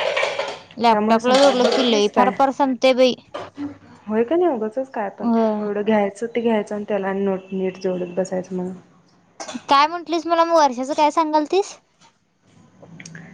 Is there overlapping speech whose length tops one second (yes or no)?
yes